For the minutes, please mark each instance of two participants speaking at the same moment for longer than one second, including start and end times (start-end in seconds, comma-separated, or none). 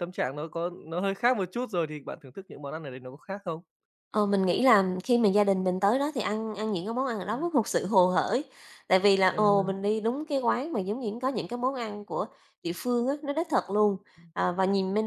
none